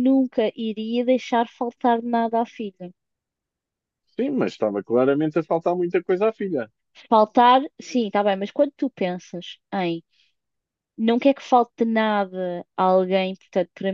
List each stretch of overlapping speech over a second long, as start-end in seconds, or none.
none